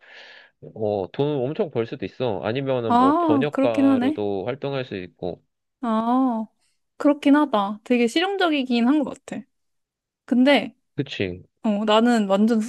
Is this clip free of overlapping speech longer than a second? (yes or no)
no